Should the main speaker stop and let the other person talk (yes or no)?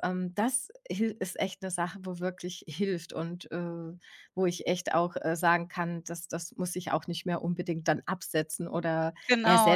yes